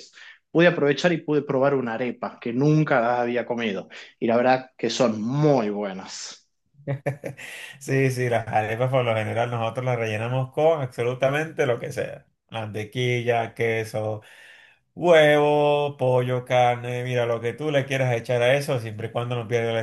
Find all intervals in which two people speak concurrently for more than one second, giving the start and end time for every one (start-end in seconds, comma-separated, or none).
none